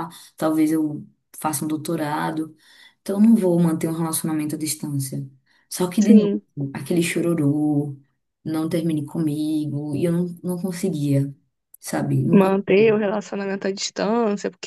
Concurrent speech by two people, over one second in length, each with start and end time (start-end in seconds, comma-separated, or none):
none